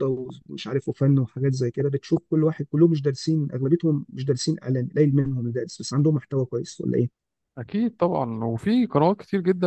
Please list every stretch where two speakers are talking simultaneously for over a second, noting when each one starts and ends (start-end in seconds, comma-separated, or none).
none